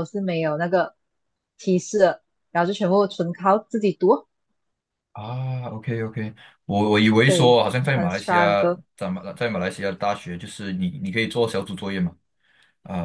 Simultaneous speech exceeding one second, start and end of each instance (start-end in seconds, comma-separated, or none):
7.2-8.8